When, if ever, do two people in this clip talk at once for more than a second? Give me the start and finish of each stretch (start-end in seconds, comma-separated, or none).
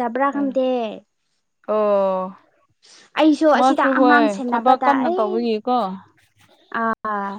3.6-5.3